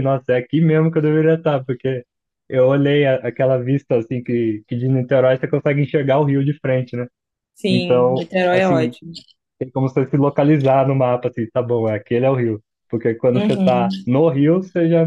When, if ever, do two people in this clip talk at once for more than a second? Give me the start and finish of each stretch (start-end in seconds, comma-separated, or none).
7.7-8.9